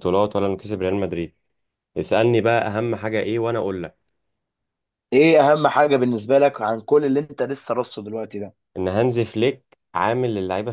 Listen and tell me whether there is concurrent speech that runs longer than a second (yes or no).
no